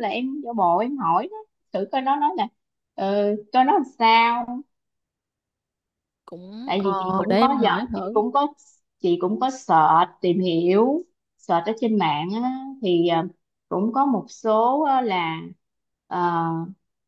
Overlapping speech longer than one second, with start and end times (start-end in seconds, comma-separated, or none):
6.7-8.2